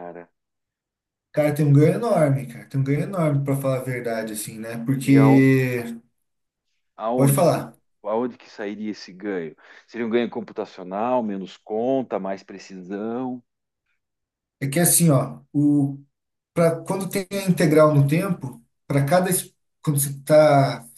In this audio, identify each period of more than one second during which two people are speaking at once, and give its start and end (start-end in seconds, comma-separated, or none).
none